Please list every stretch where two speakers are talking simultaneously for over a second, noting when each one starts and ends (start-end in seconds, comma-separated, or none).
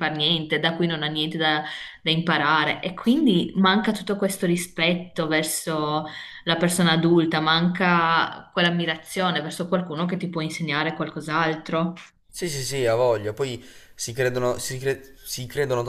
none